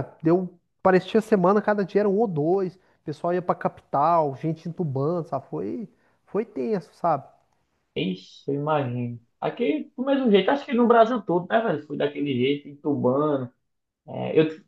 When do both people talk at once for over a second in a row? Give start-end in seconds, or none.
none